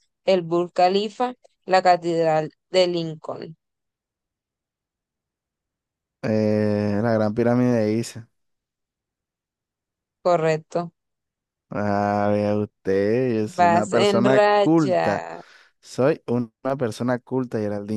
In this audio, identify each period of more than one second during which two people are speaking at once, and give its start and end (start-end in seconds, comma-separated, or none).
13.6-15.2